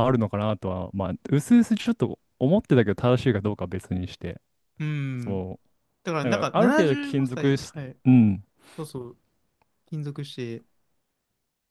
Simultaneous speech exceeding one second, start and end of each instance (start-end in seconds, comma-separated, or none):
6.2-8.0